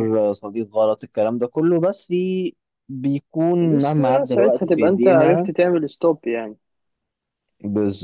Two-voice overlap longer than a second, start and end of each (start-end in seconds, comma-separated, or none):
3.6-5.5